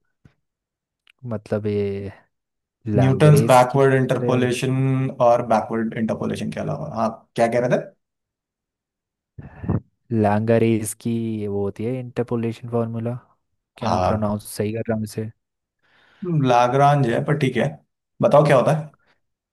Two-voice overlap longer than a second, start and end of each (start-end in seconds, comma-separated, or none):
3.0-4.5